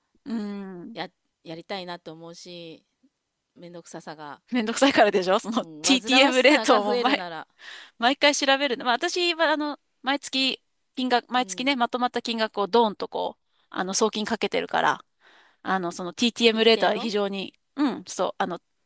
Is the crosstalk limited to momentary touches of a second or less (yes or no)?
no